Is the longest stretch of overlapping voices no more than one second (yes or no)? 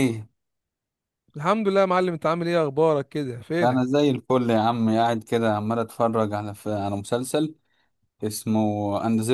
yes